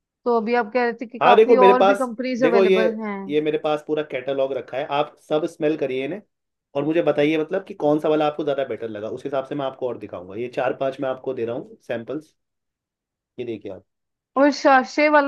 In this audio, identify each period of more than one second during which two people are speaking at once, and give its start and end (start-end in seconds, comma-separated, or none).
1.2-2.8